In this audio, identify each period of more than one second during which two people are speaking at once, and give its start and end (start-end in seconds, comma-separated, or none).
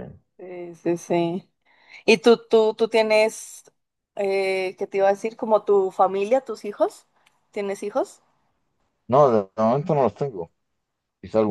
none